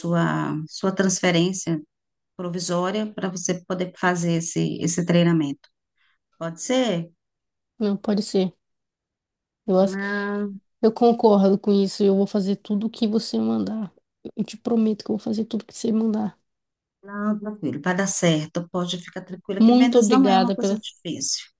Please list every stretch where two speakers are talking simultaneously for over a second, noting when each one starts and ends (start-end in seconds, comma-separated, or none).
19.6-20.8